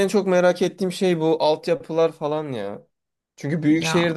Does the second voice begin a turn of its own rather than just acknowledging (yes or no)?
no